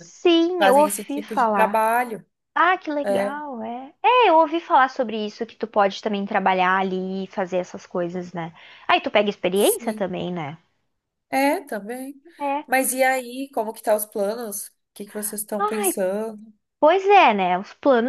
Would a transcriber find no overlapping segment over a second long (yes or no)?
no